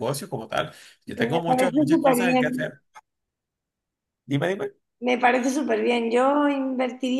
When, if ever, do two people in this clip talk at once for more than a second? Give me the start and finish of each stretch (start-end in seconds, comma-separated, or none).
1.1-2.7